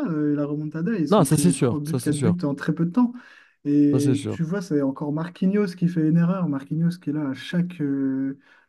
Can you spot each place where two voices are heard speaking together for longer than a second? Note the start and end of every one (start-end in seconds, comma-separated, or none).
1.1-2.4